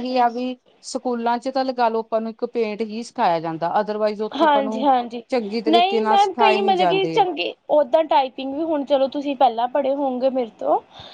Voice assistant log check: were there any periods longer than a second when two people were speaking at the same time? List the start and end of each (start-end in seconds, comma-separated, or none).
5.7-7.2